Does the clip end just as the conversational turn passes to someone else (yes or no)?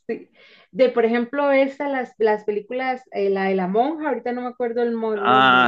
yes